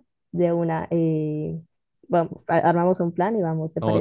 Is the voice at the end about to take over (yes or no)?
yes